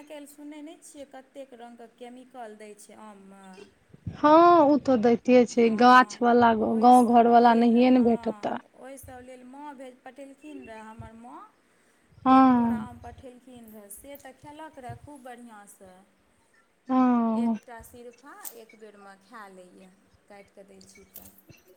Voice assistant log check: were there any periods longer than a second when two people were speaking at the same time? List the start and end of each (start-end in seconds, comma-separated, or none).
none